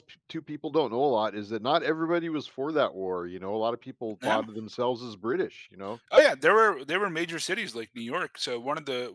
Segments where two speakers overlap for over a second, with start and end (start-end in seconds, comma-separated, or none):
none